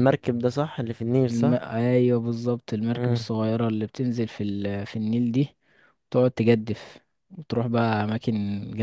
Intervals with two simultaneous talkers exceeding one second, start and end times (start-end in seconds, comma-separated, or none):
none